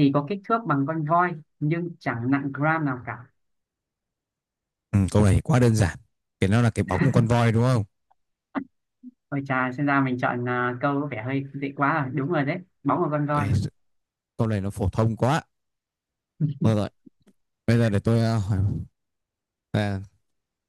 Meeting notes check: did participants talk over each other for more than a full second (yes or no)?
no